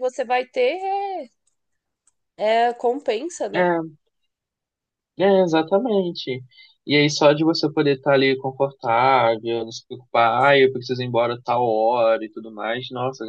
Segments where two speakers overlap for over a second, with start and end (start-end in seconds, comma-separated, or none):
none